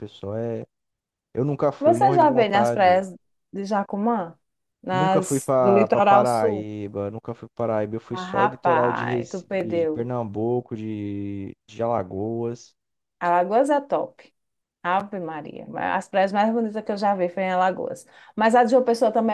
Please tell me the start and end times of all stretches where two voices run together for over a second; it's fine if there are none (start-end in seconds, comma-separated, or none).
1.8-3.1, 4.9-6.7, 8.1-10.1